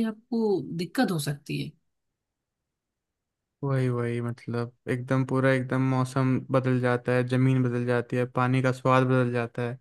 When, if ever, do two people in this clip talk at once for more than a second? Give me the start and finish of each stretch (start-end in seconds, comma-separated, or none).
none